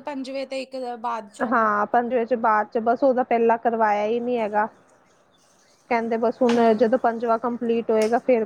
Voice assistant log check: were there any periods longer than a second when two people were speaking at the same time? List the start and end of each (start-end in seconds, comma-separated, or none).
none